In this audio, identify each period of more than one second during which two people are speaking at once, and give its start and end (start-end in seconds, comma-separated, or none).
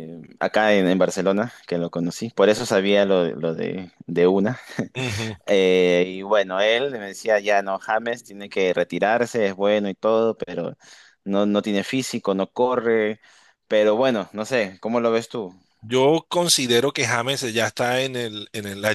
none